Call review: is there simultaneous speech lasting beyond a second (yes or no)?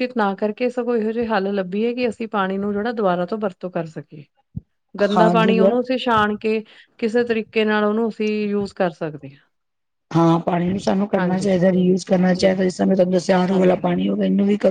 no